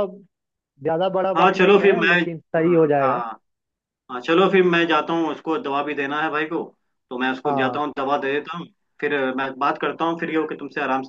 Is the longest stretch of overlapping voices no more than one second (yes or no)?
no